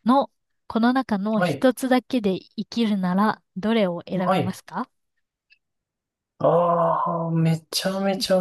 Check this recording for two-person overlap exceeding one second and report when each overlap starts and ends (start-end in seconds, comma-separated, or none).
none